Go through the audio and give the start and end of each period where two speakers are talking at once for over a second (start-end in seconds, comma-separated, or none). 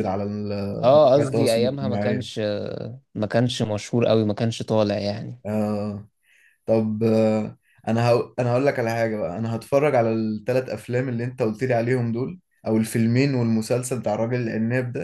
0.9-2.3